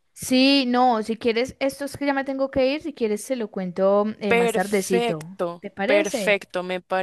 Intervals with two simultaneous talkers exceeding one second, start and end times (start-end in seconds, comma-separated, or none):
4.3-6.4